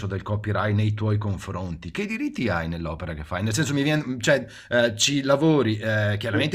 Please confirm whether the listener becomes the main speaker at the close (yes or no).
no